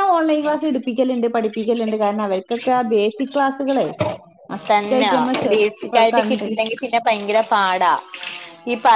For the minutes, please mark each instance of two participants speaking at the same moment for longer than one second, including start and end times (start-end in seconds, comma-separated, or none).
none